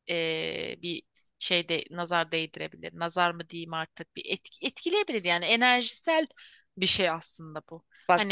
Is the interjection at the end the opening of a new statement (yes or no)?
yes